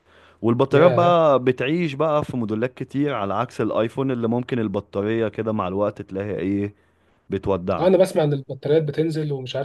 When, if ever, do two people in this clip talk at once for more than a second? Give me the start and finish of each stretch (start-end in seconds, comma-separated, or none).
none